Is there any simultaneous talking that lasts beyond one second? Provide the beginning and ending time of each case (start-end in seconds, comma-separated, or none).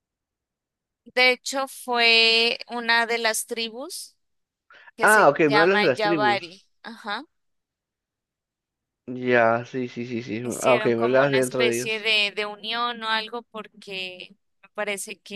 5.0-6.6, 10.4-12.1